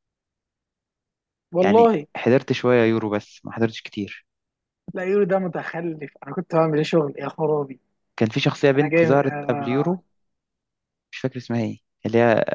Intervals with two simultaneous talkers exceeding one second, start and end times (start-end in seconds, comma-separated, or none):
8.8-10.0